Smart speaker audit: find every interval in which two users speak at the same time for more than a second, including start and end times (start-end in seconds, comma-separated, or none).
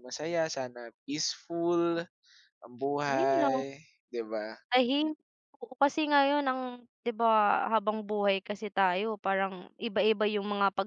none